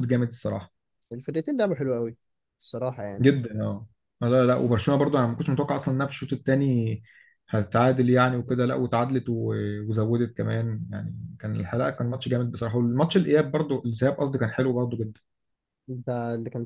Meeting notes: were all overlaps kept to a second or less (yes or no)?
yes